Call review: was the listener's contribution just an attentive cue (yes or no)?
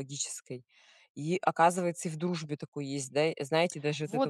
no